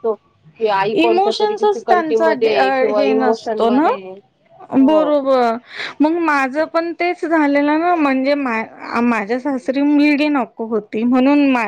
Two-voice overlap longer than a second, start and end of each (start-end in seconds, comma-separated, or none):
0.9-3.9